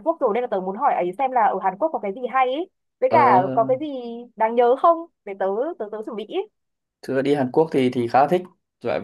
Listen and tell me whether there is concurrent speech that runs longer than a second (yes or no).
no